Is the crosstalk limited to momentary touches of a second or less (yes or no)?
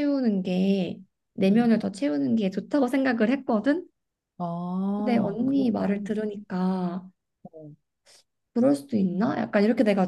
no